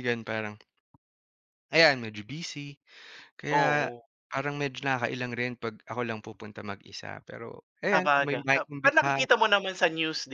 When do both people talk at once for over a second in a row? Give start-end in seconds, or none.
7.9-9.2